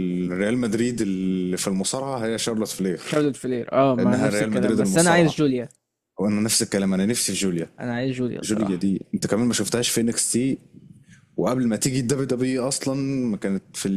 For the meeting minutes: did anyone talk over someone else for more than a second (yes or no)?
yes